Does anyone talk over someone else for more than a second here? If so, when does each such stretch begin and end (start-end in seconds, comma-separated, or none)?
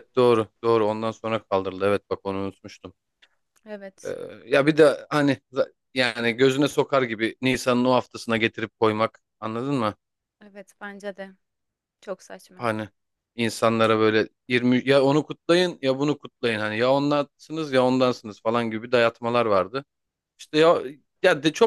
none